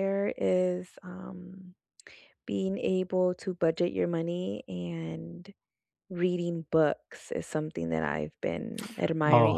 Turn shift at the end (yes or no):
yes